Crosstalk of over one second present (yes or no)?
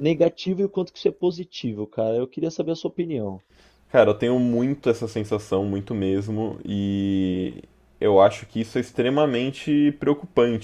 no